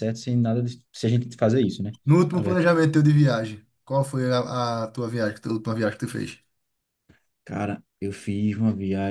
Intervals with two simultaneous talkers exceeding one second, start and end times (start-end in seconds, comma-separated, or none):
none